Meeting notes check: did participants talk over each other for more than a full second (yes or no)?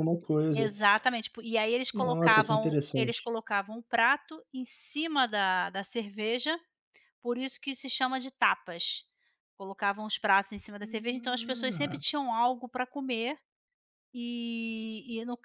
yes